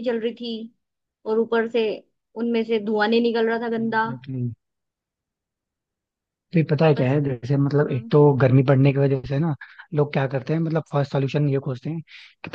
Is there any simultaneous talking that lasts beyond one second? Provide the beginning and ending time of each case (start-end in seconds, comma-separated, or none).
none